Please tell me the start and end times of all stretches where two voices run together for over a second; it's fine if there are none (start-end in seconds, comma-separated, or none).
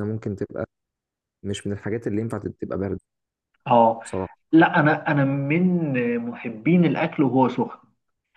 none